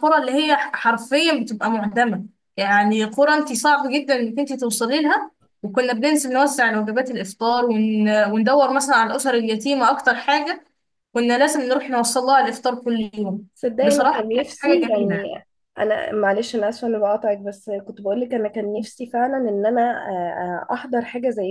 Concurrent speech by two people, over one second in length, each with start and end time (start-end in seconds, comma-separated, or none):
13.8-15.2